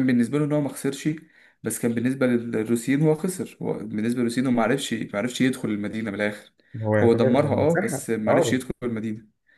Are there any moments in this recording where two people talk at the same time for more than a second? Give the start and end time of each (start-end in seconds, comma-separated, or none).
7.0-8.6